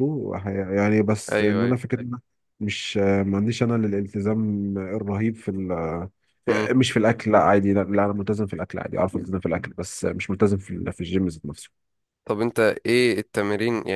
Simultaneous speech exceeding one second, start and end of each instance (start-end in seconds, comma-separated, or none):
none